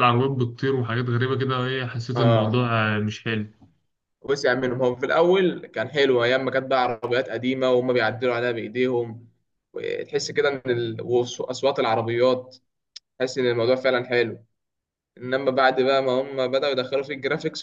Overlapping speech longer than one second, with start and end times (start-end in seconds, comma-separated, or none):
none